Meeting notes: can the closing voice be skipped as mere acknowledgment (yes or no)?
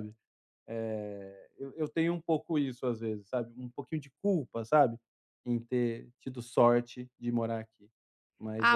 no